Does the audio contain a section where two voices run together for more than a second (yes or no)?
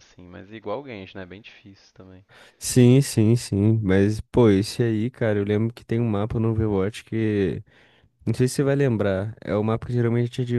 no